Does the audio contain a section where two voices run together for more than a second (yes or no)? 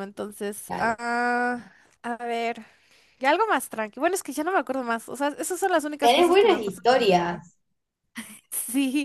yes